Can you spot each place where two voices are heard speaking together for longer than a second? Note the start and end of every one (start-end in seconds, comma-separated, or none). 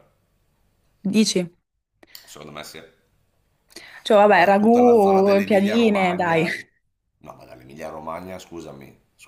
4.3-6.5